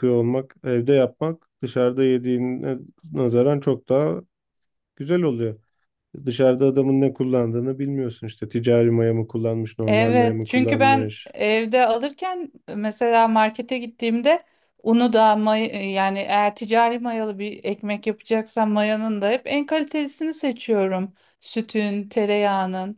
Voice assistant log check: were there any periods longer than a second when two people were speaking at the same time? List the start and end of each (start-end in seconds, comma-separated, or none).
9.9-11.3